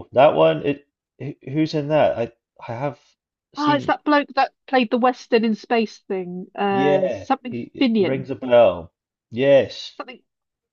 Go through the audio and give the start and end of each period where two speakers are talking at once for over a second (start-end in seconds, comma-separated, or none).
6.7-8.3